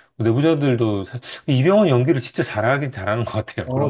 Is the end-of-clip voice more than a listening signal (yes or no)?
yes